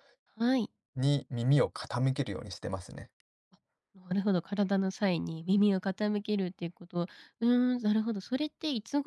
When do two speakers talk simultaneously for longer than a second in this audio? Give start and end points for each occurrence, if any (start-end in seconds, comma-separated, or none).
none